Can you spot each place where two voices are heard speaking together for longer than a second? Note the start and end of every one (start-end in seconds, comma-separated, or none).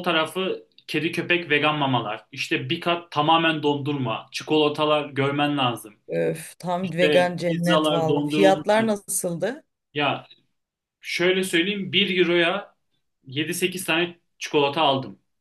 6.8-8.7